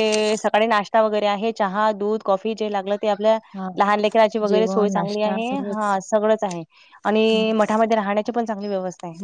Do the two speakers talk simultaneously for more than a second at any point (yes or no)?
yes